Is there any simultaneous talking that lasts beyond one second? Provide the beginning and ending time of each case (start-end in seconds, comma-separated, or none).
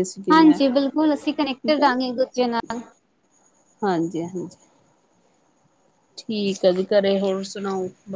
none